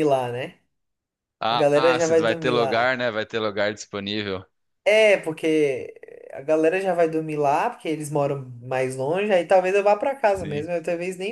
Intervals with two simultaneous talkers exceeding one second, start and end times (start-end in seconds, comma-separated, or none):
1.5-3.0